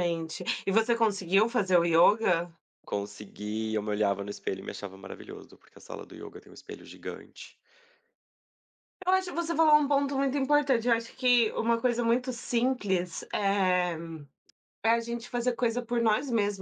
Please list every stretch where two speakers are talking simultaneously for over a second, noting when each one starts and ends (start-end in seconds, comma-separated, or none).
none